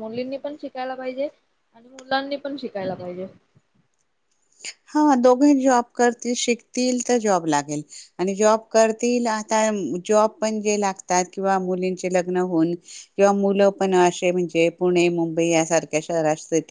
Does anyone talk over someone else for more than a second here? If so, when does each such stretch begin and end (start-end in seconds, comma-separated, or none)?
none